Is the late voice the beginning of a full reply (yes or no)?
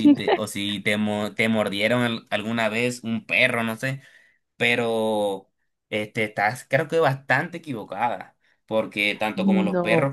no